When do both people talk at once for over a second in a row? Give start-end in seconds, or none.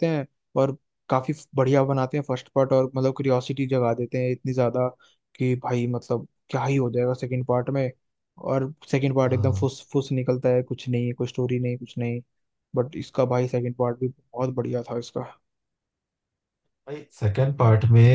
none